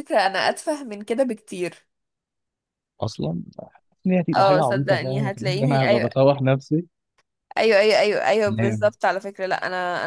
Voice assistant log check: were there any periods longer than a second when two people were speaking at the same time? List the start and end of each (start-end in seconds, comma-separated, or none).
4.3-6.1